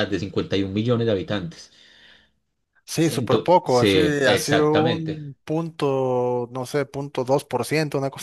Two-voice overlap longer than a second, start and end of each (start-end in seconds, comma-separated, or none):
3.1-5.2